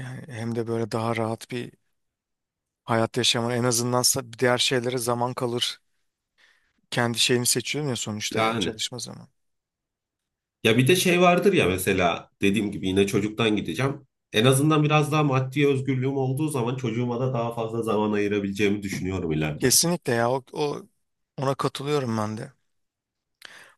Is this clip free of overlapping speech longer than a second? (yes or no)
yes